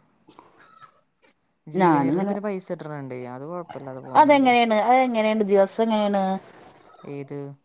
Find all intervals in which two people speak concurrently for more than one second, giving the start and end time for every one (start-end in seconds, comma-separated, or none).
4.2-6.2